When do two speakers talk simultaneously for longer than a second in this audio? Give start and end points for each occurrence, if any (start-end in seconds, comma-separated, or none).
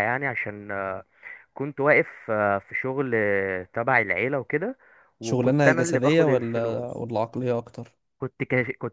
5.2-7.0